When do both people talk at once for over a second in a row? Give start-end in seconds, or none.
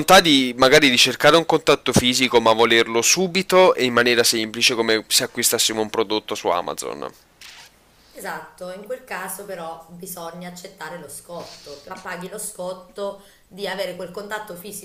none